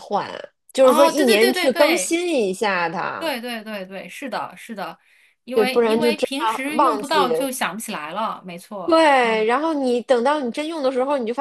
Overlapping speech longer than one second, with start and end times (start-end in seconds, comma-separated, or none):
0.8-2.2, 5.5-7.3